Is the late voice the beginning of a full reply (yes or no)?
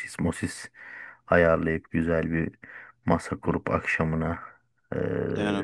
no